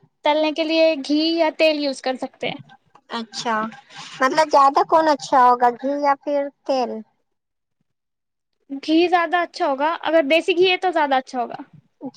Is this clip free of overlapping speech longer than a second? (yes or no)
yes